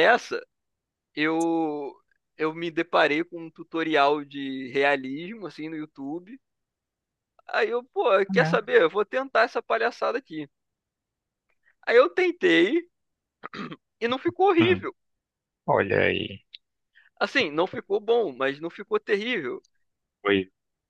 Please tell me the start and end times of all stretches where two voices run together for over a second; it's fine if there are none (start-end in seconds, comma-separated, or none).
none